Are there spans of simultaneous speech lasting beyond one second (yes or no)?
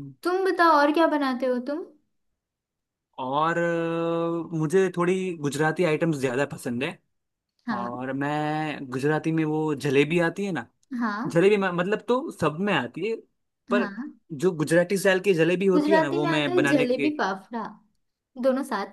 yes